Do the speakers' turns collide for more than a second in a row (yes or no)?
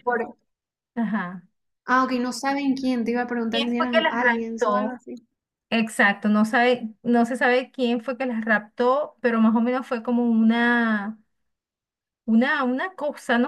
yes